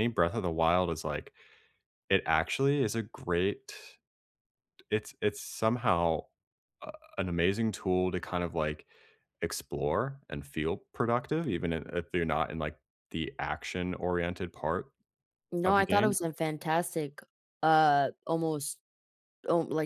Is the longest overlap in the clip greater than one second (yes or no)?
no